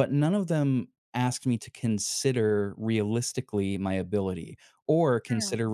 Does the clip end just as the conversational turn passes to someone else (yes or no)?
no